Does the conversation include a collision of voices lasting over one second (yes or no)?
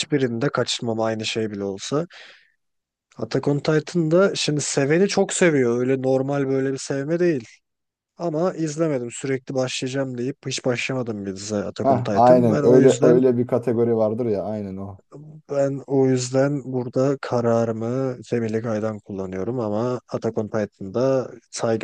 yes